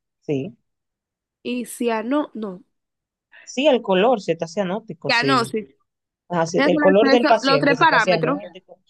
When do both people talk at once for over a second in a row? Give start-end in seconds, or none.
6.6-8.4